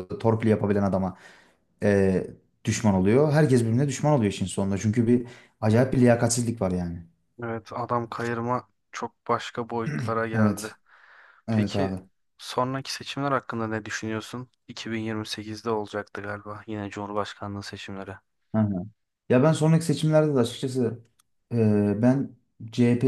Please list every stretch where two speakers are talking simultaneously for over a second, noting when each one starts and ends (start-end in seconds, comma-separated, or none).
none